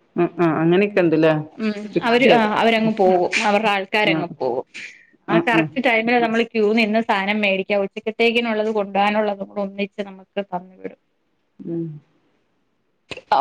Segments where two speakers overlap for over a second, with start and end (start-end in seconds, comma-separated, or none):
none